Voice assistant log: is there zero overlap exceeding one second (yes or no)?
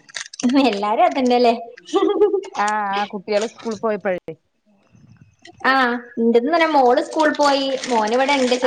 yes